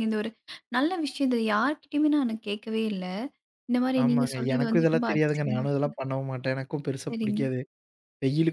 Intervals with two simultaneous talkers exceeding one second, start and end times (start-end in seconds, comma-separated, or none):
4.0-5.9